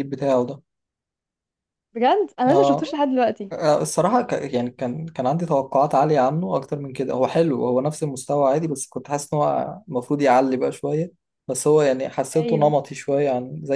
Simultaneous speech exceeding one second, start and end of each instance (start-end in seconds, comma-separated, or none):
none